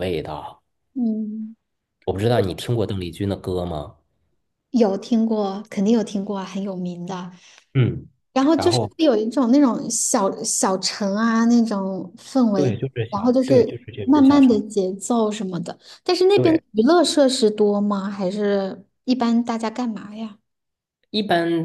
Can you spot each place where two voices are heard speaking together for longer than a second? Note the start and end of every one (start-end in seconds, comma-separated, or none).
12.5-14.6